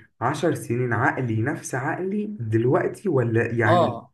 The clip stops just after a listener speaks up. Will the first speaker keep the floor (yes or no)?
no